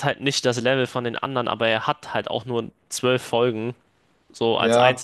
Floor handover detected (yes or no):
yes